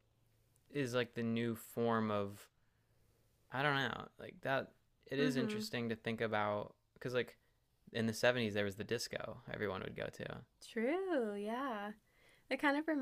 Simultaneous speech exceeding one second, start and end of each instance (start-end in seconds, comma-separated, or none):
none